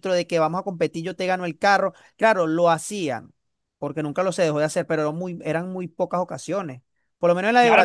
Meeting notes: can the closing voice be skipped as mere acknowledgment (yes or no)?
no